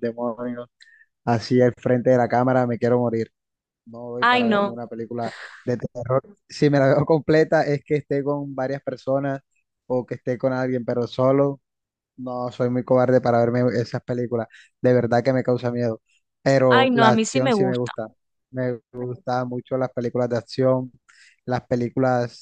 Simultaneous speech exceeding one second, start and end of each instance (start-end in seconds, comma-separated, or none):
16.7-17.9